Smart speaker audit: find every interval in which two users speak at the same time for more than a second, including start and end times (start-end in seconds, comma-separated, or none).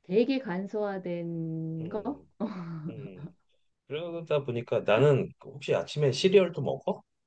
none